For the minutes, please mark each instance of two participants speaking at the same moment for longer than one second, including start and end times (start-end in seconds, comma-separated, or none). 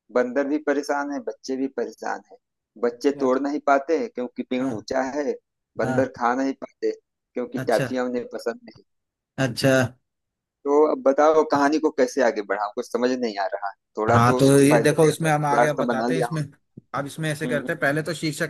14.1-16.4